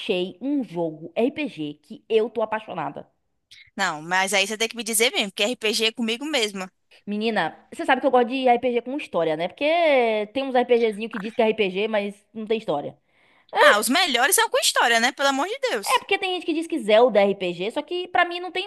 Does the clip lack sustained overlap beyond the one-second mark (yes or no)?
yes